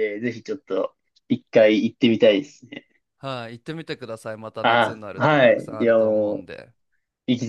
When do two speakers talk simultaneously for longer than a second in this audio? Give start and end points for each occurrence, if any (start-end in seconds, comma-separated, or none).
4.6-6.5